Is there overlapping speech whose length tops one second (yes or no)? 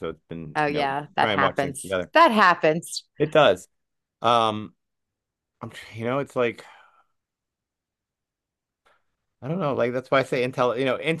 yes